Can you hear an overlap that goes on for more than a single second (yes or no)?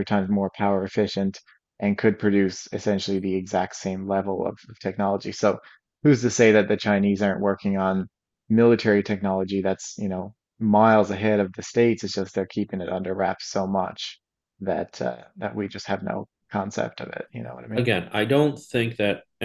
no